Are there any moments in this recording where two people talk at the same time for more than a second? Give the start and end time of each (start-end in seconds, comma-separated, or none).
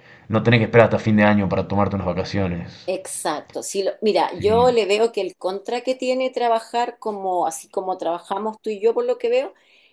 none